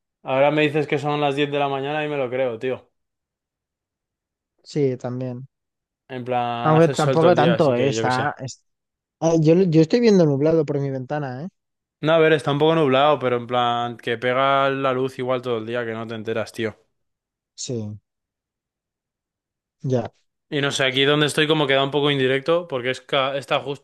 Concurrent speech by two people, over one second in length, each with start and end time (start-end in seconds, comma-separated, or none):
6.6-8.3